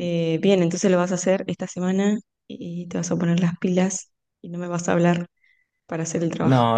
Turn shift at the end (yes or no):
yes